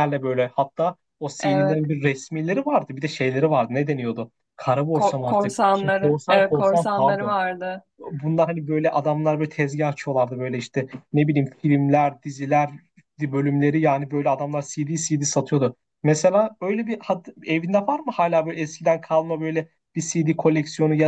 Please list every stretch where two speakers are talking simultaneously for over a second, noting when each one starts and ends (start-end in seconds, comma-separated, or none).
4.9-7.3